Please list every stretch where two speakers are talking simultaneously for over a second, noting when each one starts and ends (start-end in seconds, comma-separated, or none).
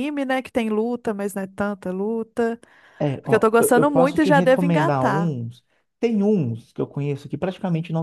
3.2-5.3